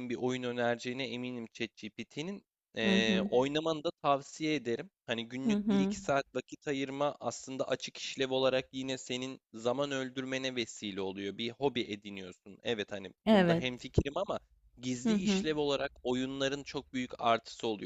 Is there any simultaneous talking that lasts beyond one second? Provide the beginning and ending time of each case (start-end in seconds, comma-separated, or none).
none